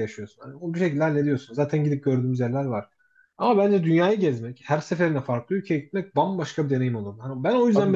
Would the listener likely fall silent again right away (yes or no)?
no